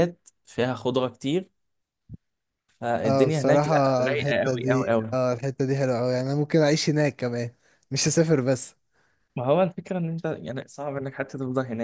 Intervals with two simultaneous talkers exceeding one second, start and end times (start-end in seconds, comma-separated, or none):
3.0-5.2